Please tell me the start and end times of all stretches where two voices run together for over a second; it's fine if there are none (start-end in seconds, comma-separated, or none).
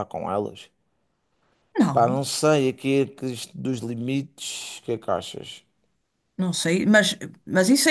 none